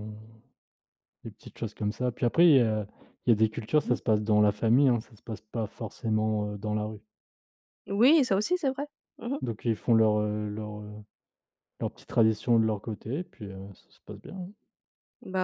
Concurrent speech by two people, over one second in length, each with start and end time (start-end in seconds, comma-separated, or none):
none